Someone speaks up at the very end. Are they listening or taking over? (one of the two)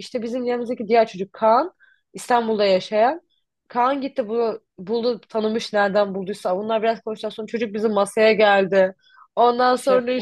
listening